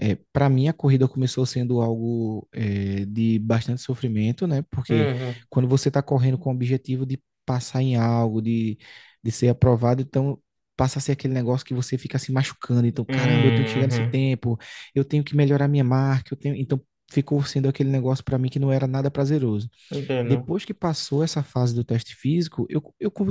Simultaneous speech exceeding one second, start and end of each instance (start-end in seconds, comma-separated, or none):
13.1-14.3